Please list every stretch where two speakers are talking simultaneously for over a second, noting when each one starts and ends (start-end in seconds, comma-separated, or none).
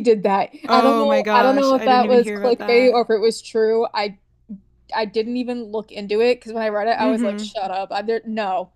0.7-3.0